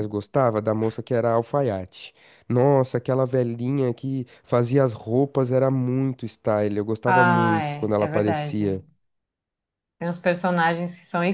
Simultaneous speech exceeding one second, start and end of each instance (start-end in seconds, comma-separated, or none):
7.0-8.6